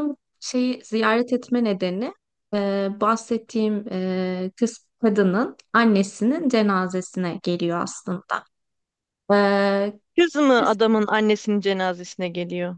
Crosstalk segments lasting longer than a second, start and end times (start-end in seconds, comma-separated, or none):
none